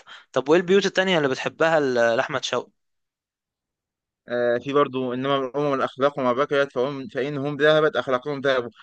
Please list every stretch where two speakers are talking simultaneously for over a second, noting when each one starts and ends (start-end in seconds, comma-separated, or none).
none